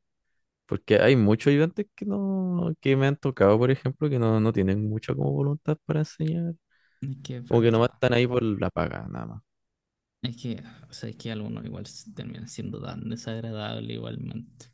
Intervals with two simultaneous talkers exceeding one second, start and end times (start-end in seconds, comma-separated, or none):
none